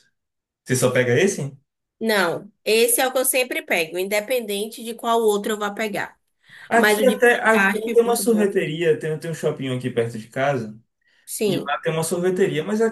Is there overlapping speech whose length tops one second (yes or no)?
yes